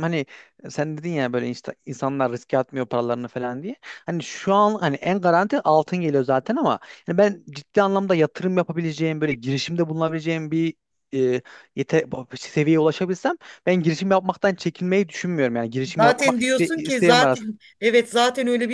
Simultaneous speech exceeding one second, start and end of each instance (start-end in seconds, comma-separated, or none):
16.0-17.6